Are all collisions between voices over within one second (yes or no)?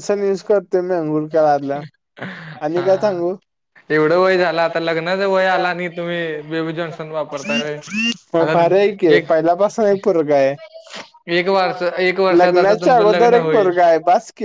no